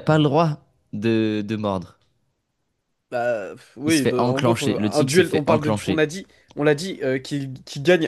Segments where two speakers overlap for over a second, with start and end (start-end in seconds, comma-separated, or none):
3.9-6.0